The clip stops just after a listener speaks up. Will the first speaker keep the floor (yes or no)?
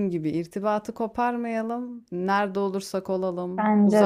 yes